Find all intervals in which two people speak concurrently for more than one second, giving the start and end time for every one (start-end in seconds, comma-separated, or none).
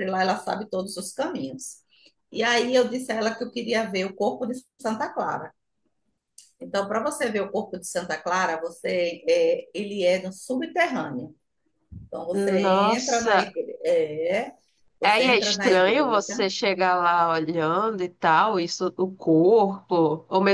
12.3-13.5, 15.0-16.5